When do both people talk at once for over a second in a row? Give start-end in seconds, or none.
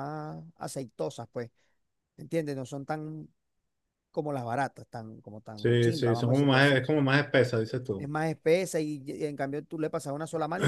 5.5-6.8